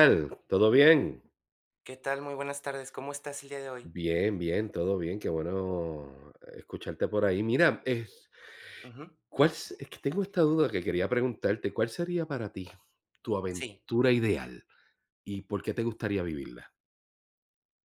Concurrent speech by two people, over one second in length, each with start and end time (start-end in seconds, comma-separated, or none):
none